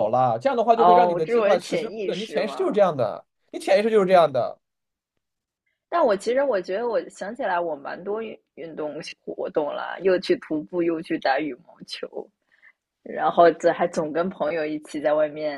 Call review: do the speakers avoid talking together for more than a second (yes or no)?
no